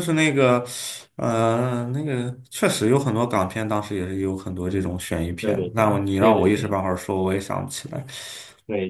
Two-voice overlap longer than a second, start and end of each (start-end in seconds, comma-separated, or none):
5.4-6.8